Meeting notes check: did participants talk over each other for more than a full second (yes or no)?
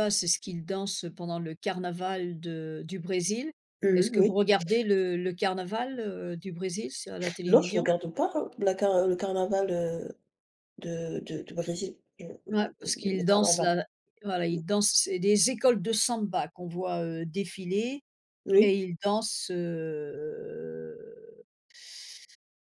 yes